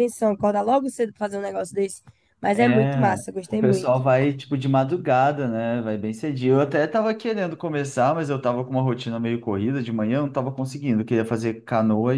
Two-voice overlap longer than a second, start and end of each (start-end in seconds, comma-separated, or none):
2.5-4.0